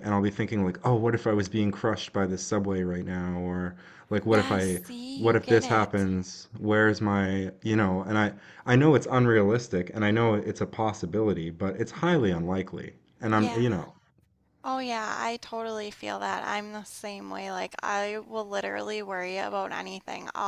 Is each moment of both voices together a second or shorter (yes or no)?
no